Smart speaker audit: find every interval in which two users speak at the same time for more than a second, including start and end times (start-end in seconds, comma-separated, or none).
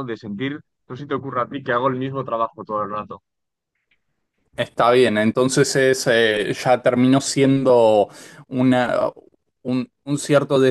none